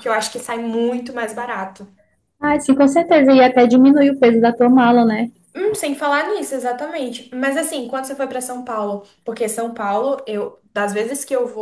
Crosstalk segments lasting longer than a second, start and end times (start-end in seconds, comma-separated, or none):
none